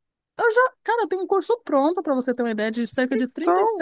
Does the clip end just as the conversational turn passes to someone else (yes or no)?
no